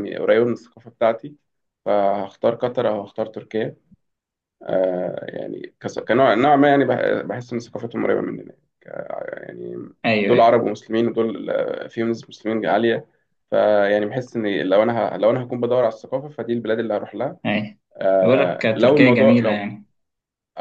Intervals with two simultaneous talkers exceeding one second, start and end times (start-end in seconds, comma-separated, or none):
18.2-19.7